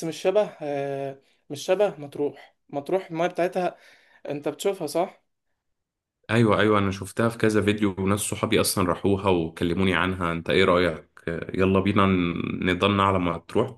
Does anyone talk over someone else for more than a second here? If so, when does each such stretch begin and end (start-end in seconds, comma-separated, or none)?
none